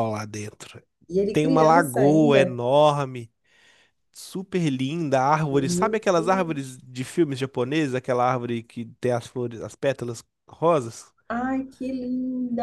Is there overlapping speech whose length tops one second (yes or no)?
yes